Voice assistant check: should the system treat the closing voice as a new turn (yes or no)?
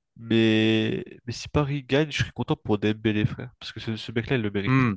no